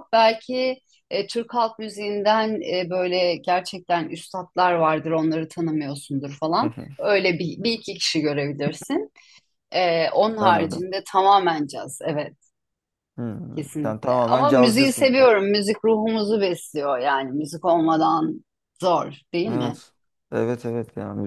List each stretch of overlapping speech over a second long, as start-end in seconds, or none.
13.6-15.1